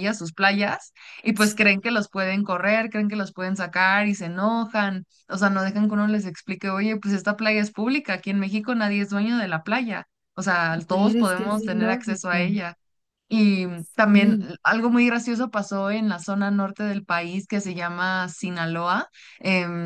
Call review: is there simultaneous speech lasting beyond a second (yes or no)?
yes